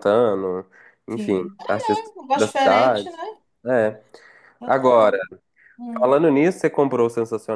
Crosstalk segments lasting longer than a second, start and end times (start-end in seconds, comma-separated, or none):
1.1-3.1